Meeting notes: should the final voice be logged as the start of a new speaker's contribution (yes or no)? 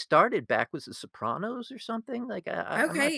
yes